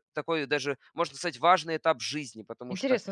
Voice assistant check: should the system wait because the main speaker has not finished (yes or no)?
no